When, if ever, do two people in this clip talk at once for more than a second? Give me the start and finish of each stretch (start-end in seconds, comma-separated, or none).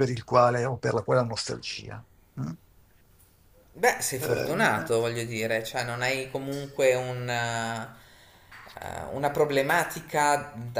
none